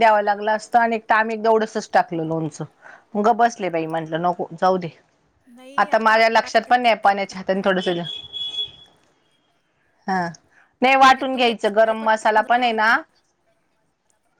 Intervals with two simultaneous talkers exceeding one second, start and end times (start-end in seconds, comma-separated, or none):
5.9-7.9, 11.3-12.9